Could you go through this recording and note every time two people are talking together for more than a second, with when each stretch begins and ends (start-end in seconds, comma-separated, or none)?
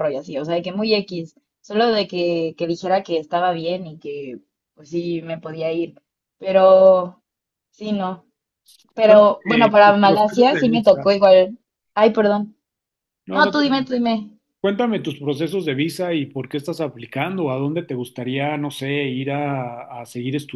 9.0-11.1